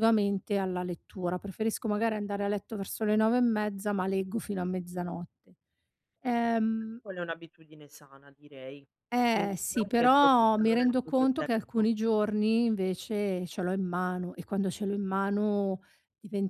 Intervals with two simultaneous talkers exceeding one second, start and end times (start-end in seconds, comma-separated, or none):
9.3-11.9